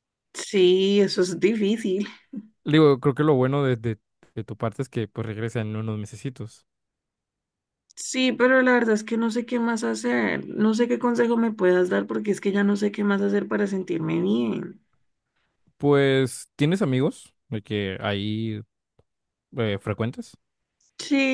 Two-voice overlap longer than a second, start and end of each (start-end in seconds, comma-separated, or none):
none